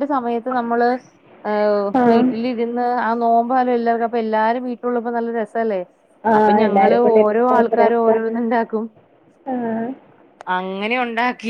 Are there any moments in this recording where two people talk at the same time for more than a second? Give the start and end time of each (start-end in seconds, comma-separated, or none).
6.4-8.3